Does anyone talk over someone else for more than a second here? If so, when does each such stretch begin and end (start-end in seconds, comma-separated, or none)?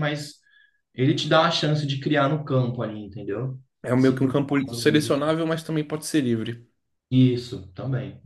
4.0-5.3